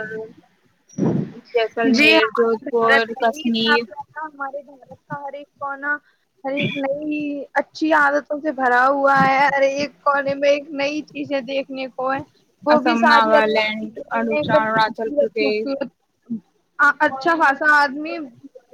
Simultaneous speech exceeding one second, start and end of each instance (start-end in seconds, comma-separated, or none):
1.8-3.8, 12.7-15.8